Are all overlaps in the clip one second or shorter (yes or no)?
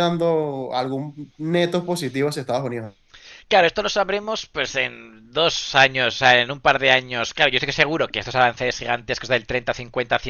yes